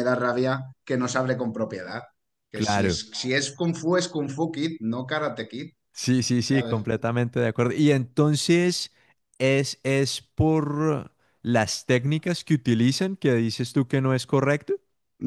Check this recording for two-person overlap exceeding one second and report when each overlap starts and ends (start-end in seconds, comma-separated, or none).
none